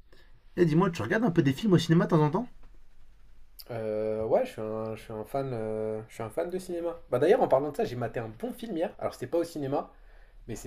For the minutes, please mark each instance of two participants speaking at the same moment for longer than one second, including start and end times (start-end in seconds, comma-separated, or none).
none